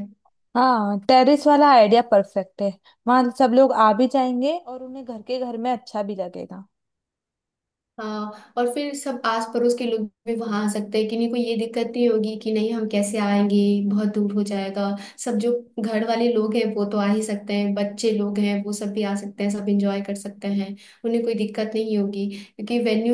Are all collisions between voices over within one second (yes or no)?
yes